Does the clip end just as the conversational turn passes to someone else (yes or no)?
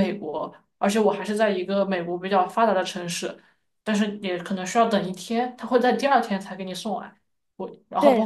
no